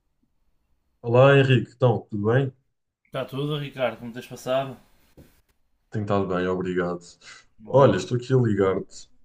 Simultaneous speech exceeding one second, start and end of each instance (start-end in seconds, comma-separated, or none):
none